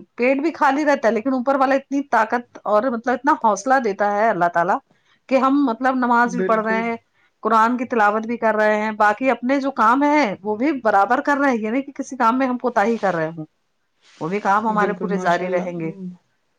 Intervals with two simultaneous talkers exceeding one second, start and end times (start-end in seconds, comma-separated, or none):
none